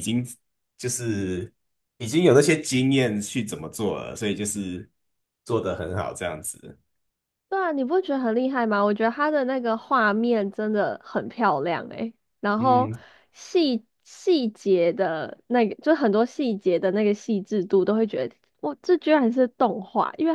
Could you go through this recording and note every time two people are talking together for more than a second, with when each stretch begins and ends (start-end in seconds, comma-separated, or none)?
none